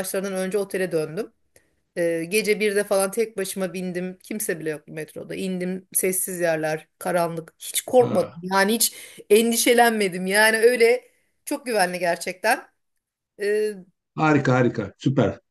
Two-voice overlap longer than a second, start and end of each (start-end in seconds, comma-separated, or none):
none